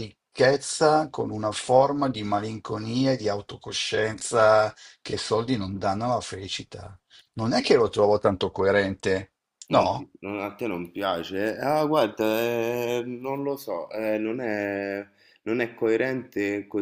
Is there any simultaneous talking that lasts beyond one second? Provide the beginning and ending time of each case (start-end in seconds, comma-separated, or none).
none